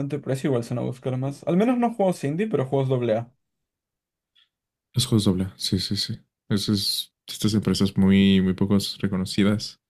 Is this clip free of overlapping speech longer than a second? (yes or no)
yes